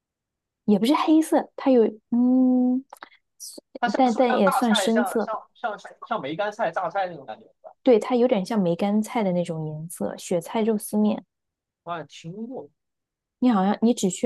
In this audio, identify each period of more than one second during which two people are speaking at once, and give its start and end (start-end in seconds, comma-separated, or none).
4.0-5.3